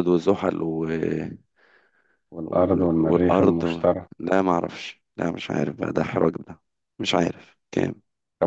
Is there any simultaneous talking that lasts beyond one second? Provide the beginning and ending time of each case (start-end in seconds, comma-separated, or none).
2.4-4.1